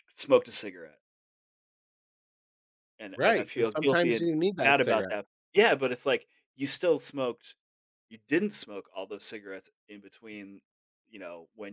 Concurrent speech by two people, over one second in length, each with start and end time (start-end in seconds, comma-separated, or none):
3.2-5.1